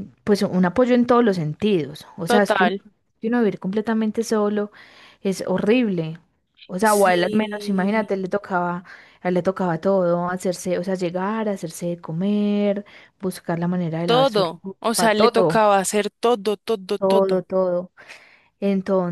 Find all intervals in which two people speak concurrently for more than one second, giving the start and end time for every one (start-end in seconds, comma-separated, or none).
6.8-8.1, 14.1-15.6